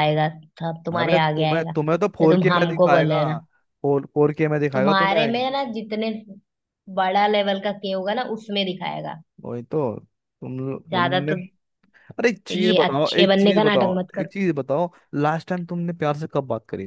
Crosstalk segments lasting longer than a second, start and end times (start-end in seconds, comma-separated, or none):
1.0-3.2, 12.5-14.3